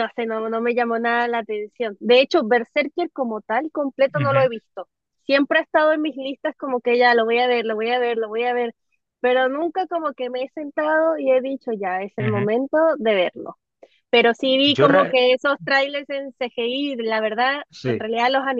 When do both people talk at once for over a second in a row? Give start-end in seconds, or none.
none